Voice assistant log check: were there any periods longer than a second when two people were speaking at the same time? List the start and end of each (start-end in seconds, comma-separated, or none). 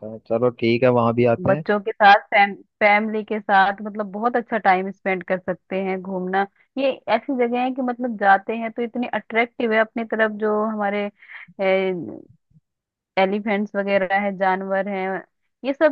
none